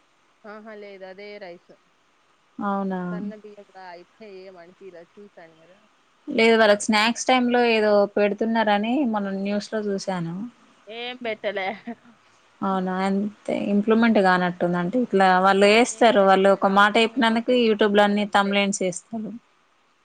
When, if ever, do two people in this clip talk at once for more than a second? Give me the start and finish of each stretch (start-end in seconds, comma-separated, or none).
16.0-18.5